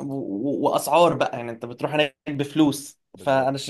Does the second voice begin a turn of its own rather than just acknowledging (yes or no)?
no